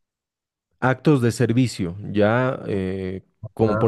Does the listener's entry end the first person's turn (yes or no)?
yes